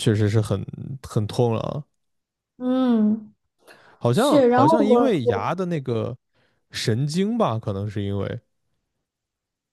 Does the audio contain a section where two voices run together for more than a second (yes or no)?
yes